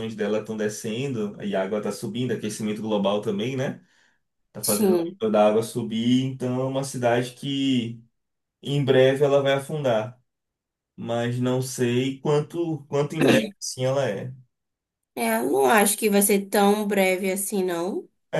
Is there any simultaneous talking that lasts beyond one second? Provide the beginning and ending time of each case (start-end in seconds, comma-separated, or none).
none